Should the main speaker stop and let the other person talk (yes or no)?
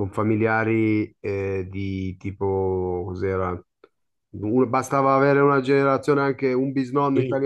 yes